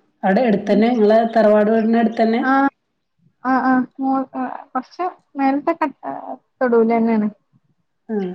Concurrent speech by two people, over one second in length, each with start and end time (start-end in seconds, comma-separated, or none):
none